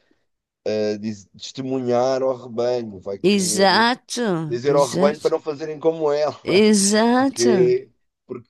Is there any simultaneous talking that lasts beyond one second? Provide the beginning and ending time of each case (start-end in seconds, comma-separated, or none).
none